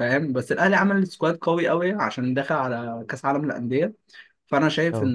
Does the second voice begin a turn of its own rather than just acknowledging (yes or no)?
no